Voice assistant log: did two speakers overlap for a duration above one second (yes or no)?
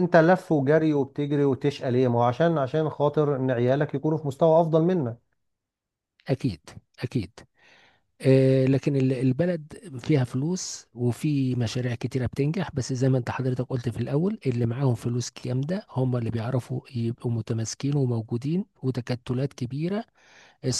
no